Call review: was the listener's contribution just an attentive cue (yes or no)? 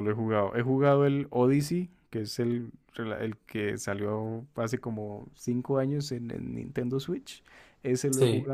yes